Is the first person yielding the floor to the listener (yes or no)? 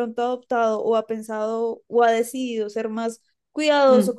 no